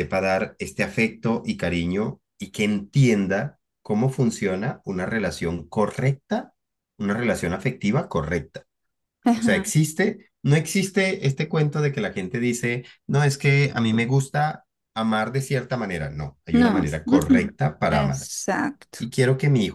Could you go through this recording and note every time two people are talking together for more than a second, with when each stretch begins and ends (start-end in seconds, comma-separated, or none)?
16.5-18.3